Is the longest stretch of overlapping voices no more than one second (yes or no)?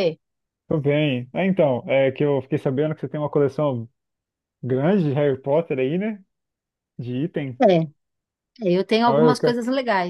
yes